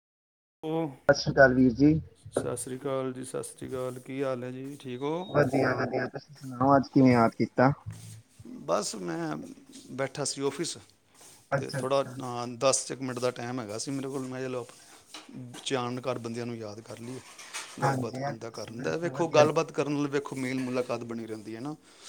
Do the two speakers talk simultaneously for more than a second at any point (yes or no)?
yes